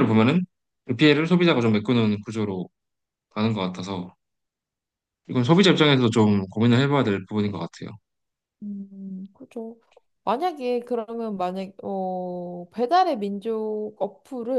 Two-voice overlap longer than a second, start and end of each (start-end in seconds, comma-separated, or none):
none